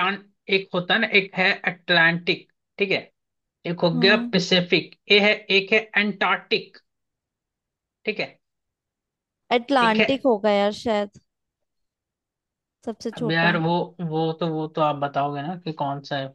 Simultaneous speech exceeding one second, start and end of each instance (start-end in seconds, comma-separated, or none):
none